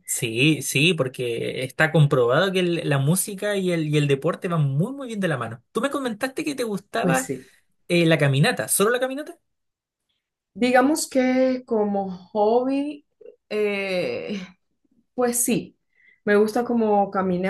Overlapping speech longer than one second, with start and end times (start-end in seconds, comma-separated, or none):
none